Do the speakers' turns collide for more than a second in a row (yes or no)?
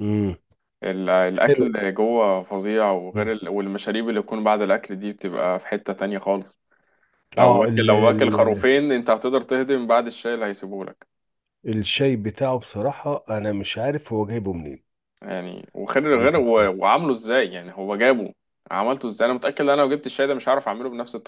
yes